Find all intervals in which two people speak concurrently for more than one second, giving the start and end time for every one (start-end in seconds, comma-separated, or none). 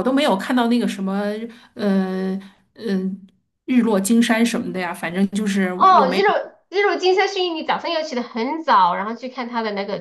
none